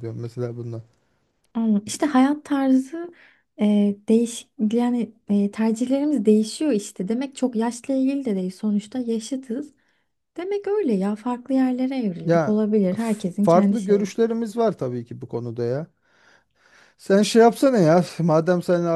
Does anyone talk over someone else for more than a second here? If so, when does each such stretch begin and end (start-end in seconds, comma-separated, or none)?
12.2-14.2